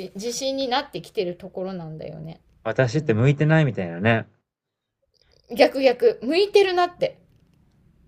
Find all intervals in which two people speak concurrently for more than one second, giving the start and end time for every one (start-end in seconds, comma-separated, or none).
none